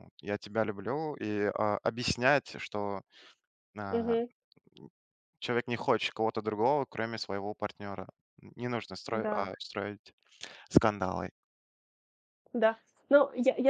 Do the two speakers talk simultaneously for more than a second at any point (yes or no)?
no